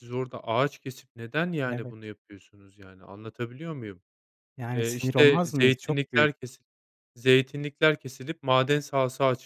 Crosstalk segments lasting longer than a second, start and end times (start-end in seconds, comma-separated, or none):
4.7-6.3